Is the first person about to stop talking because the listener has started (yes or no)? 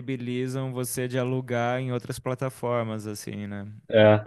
no